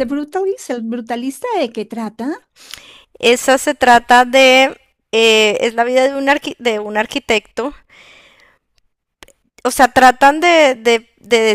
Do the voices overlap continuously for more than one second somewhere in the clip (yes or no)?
no